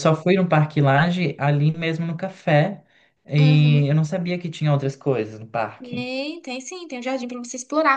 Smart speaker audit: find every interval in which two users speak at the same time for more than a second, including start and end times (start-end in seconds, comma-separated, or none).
none